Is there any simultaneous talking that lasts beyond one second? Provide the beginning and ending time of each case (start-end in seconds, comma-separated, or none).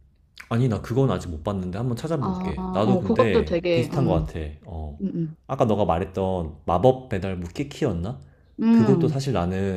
2.2-4.3